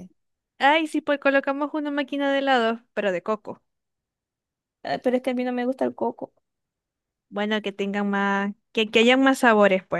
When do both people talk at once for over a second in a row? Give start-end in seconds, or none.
none